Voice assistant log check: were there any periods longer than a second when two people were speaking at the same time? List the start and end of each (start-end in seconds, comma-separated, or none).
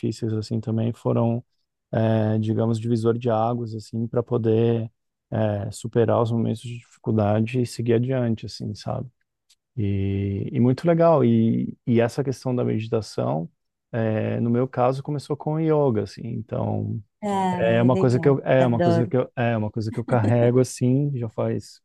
17.5-19.1